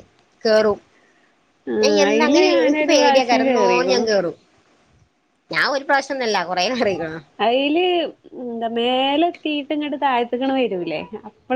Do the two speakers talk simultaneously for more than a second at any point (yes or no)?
yes